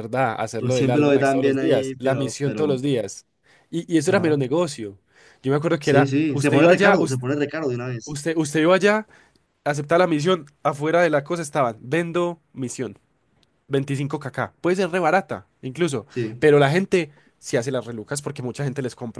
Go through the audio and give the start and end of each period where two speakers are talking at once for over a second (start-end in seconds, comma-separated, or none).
0.6-2.7, 5.8-7.2